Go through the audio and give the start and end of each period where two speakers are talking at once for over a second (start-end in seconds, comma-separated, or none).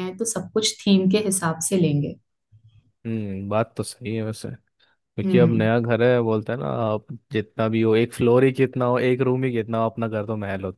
none